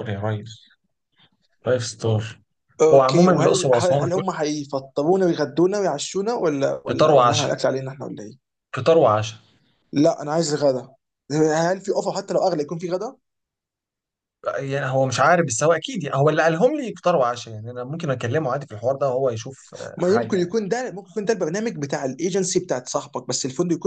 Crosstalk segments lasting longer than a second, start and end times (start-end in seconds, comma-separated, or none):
2.9-4.2